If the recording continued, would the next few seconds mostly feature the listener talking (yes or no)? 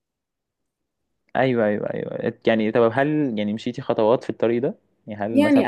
yes